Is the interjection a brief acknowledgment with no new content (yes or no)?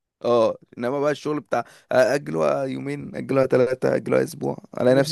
no